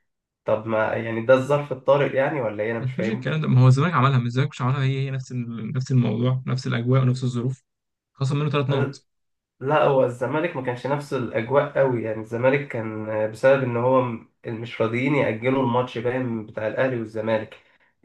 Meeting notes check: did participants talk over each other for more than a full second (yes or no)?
no